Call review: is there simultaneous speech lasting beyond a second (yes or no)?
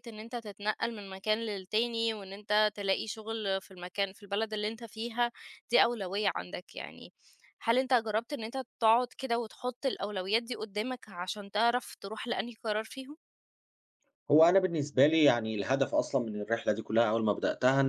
no